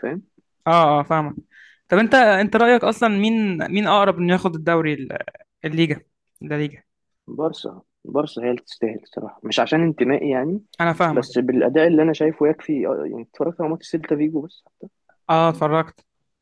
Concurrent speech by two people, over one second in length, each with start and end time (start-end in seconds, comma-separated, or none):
none